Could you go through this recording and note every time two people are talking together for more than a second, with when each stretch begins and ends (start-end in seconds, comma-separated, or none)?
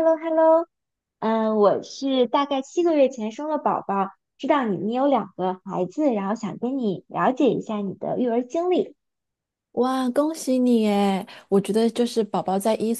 none